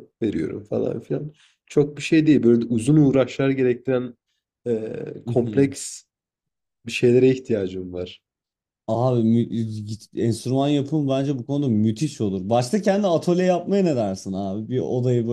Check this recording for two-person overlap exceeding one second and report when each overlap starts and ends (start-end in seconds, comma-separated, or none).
none